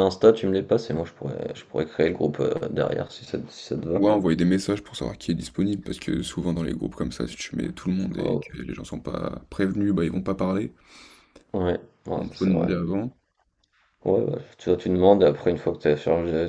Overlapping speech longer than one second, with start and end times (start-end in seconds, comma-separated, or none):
none